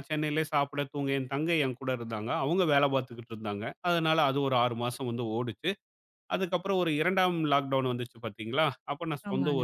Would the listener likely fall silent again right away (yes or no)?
yes